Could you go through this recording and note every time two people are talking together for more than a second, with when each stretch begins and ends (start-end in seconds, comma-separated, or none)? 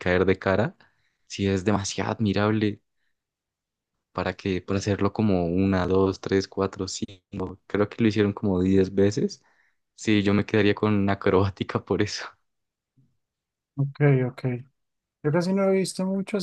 none